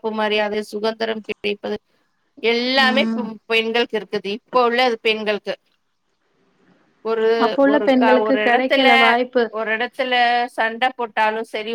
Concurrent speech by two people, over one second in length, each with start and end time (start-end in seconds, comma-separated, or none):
none